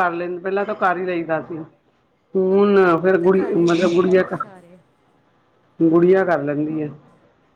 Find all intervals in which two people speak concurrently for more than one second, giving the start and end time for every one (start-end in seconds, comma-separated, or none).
2.5-4.4